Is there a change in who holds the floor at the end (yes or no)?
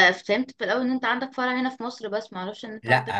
yes